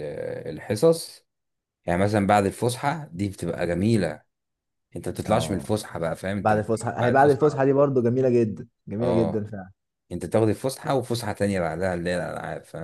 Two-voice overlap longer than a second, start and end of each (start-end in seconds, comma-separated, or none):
6.4-7.7